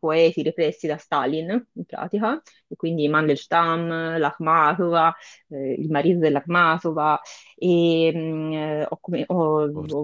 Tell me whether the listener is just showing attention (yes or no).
yes